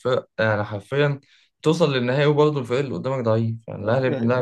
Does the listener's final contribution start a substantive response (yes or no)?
yes